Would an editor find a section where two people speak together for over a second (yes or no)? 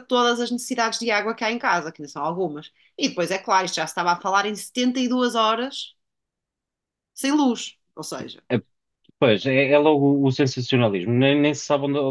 no